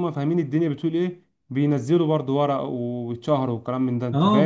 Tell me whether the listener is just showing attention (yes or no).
no